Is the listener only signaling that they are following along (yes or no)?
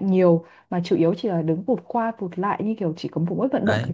no